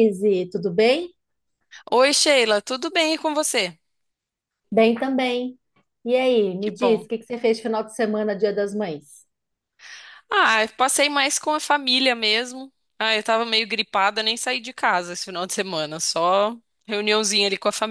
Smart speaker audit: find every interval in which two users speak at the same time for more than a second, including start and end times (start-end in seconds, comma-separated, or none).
none